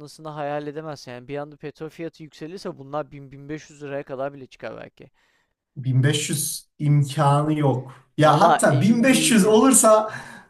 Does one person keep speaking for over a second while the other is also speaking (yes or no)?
yes